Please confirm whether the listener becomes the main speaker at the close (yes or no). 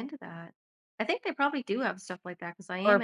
yes